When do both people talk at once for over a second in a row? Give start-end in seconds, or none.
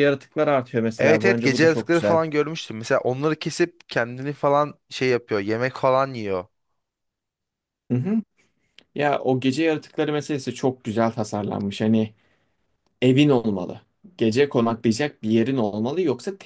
1.0-2.2